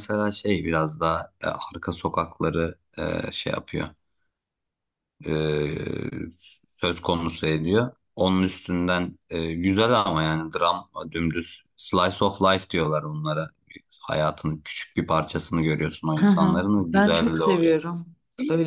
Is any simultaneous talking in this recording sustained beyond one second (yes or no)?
yes